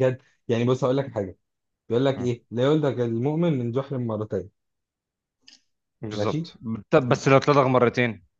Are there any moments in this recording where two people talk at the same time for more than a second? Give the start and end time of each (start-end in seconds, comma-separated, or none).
none